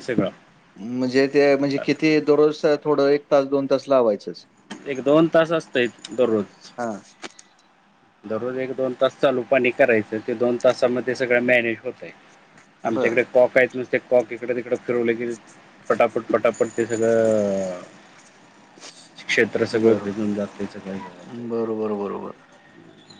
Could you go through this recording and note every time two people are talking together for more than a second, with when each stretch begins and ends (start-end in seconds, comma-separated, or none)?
none